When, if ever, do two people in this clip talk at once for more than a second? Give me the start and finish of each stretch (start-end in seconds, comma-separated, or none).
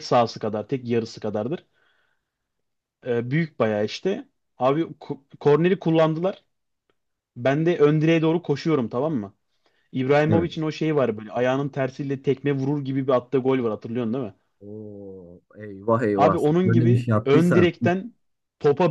16.1-17.7